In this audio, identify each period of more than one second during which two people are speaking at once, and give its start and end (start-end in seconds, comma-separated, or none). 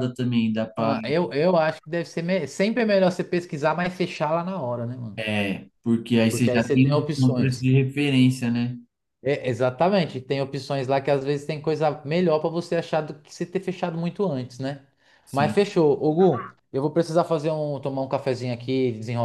6.3-7.6